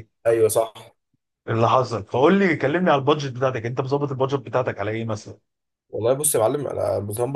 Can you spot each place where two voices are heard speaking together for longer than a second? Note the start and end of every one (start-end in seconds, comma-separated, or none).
none